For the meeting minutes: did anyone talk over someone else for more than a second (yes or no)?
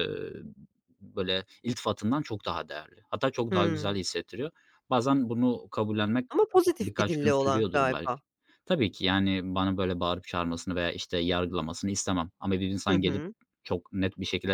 yes